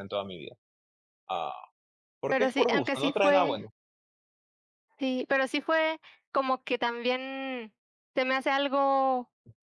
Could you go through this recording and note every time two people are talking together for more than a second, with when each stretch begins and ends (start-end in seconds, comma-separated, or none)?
2.3-3.6